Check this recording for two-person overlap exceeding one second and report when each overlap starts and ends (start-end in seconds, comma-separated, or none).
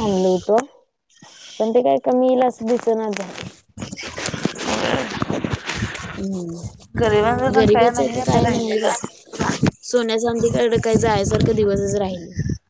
7.0-8.9